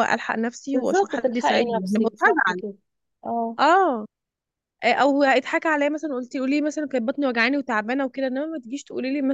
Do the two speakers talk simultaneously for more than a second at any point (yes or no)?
yes